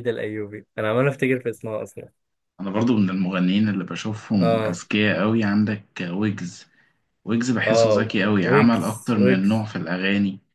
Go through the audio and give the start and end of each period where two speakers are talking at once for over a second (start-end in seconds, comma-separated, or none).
7.7-9.7